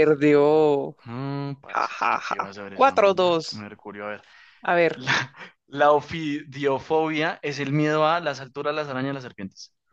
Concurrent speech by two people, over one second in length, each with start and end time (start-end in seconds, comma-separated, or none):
1.7-3.7